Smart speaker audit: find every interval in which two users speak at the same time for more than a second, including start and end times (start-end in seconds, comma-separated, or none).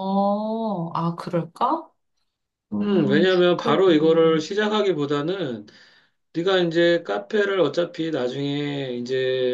2.8-4.5